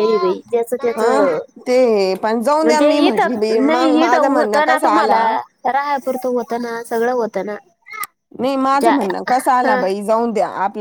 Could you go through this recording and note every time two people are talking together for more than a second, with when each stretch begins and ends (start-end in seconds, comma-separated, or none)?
2.6-5.2